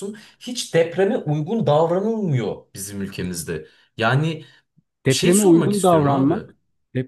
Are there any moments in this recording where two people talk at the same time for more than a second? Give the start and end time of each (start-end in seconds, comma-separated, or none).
5.1-6.3